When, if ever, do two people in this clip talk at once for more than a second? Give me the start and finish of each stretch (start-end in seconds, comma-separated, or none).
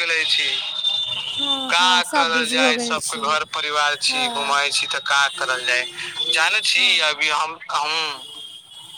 1.7-3.2